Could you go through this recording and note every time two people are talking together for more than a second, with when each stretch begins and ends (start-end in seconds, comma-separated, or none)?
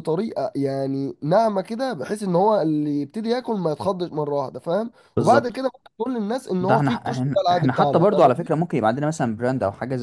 6.6-8.5